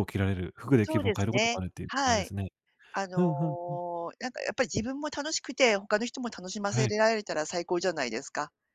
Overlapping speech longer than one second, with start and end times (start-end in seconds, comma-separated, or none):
0.8-2.3